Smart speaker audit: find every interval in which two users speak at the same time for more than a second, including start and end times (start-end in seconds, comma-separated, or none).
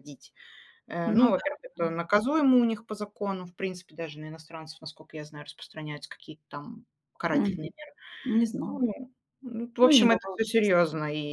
none